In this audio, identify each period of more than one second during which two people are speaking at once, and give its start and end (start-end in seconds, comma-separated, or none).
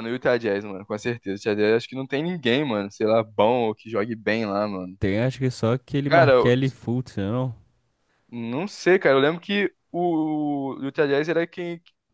none